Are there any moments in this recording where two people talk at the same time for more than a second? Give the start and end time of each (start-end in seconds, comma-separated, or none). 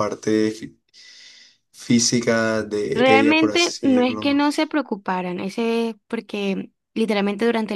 2.9-4.4